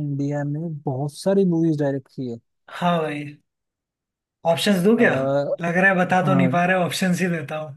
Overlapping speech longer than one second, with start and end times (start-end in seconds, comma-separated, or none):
none